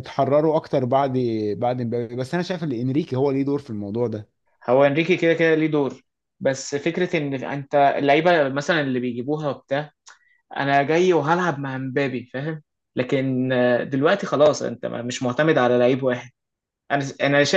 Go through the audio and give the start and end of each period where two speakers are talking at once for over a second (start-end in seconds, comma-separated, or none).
none